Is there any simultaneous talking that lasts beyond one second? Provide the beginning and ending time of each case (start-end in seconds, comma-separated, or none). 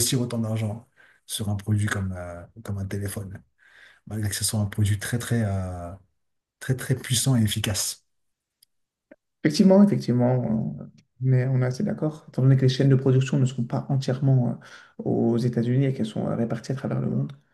none